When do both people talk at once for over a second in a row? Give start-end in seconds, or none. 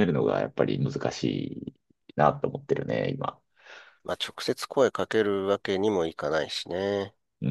none